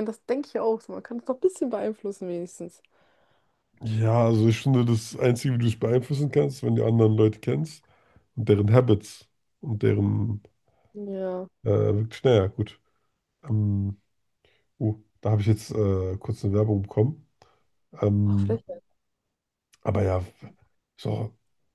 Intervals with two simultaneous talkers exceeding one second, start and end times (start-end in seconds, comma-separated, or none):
none